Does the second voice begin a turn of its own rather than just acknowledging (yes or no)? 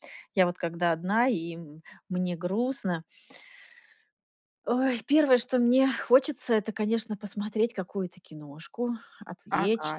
yes